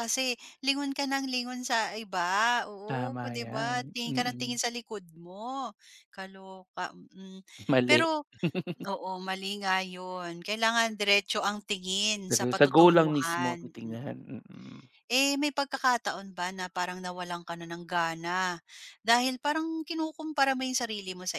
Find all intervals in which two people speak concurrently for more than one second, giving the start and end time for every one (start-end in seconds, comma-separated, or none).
2.9-4.6, 12.3-14.2